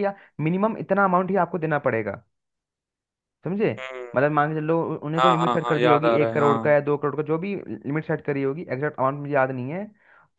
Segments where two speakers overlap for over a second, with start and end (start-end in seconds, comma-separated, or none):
5.2-6.8